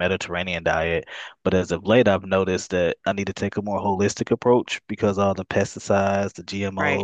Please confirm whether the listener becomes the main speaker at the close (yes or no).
no